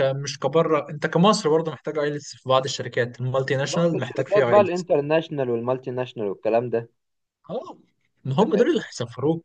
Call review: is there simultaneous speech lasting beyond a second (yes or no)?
yes